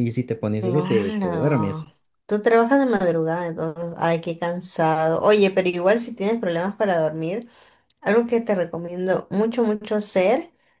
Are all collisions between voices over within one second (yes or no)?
no